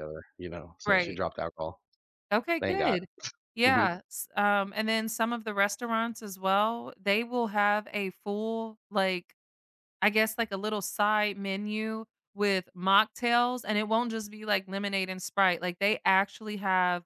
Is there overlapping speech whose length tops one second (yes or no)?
no